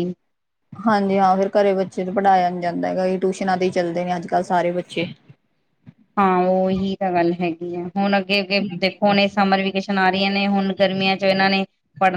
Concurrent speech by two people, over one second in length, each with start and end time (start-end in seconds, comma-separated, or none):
none